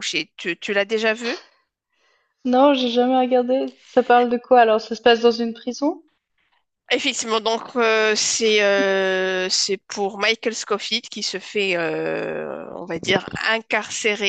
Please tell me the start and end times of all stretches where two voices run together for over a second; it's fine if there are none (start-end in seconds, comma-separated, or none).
none